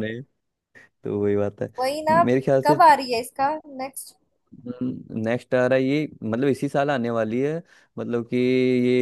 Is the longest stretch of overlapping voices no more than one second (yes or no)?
yes